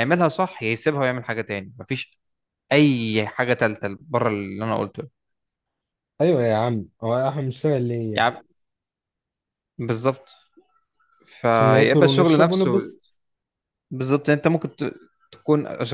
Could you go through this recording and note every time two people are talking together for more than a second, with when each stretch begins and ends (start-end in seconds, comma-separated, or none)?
11.5-12.7